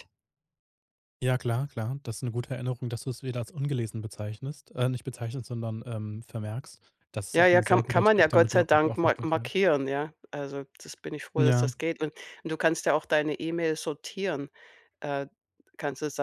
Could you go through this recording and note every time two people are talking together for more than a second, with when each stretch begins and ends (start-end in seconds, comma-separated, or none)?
7.3-9.5